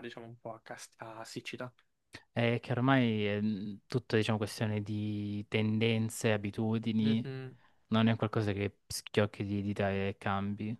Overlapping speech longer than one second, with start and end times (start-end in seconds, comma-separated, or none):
none